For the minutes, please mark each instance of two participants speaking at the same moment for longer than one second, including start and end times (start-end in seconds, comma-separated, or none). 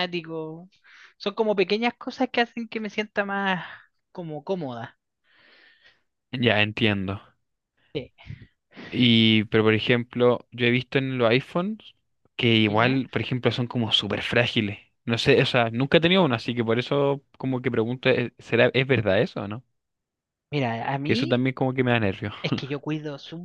none